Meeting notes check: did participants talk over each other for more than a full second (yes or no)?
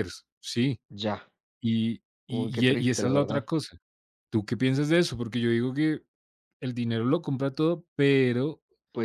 yes